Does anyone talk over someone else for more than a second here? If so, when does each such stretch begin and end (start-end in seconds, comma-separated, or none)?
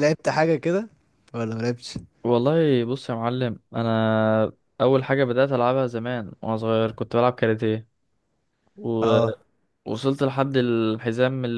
none